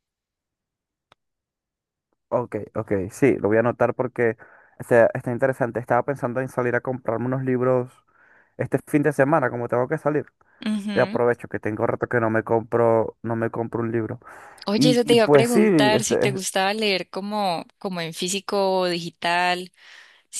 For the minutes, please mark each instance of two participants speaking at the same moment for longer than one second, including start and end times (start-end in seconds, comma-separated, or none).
14.8-16.4